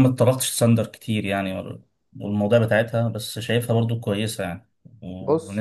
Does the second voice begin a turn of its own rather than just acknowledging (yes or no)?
no